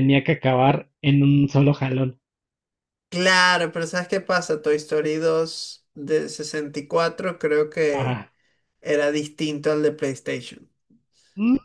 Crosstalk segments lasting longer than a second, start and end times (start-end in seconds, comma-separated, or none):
none